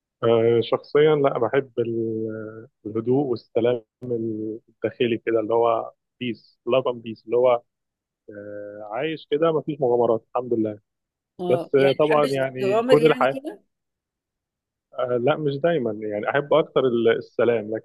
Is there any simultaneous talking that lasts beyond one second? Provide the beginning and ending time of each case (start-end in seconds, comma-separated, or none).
11.5-13.4